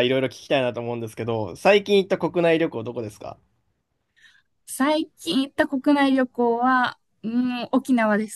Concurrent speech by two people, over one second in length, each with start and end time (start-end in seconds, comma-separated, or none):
none